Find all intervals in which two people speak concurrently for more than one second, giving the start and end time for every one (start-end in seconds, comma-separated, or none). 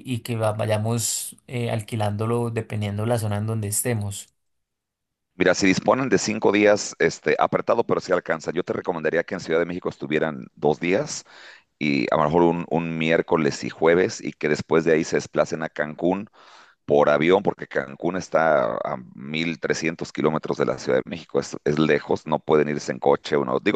none